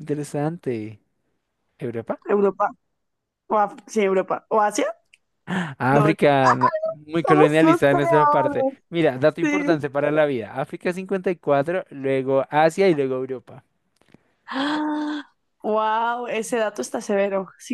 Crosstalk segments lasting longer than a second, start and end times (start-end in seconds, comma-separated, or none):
7.2-8.7